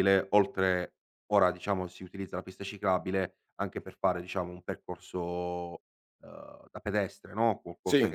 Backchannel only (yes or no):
yes